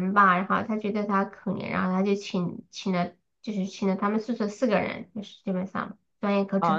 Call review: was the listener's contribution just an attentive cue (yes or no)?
no